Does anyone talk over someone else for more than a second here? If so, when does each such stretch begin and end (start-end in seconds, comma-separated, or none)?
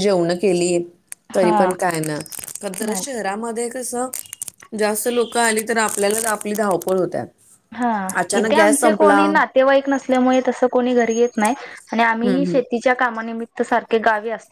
8.4-9.6